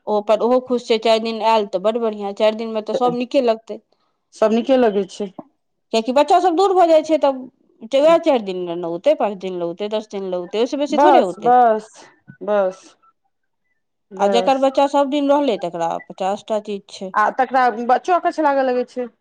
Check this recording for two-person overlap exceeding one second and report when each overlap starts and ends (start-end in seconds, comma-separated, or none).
none